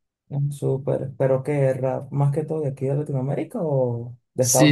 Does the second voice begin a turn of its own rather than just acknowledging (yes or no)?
yes